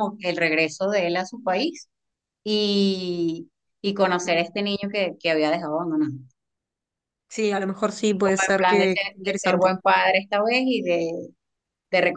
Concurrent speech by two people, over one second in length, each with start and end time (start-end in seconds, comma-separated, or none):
8.2-9.7